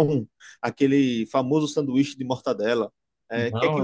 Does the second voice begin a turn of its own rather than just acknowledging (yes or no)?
no